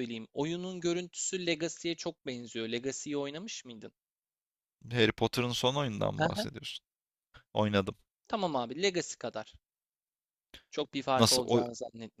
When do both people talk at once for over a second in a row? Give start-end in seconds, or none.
none